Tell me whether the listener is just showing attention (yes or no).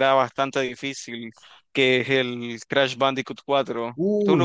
no